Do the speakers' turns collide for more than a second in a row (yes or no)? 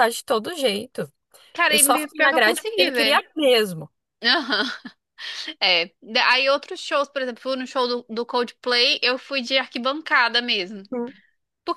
yes